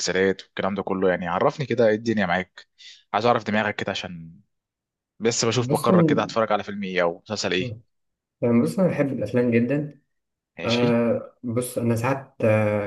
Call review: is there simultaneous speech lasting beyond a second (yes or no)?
no